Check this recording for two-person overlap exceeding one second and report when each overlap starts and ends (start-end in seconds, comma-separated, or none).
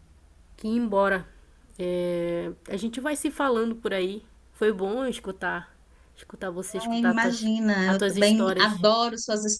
6.8-8.8